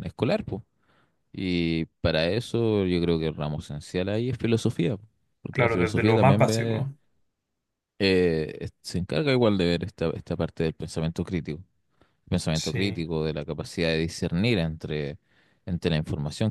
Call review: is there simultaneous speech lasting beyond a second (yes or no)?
yes